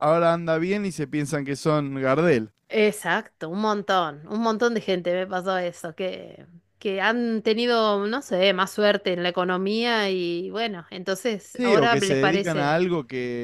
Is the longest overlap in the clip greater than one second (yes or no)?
yes